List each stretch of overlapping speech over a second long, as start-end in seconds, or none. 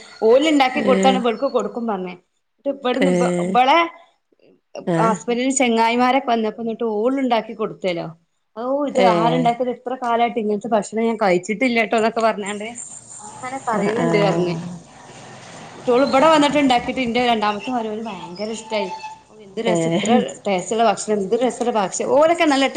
none